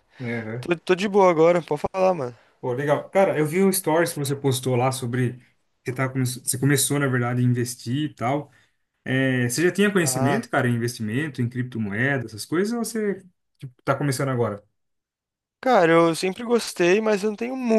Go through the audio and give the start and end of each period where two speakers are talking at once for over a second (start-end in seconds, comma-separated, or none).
none